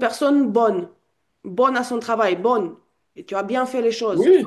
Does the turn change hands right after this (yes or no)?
no